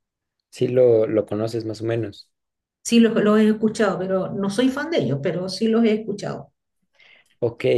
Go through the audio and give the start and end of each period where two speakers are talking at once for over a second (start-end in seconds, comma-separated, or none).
none